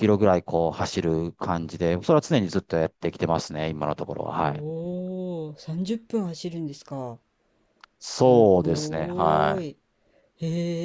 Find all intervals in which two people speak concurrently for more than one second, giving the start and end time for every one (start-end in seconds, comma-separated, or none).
8.0-9.7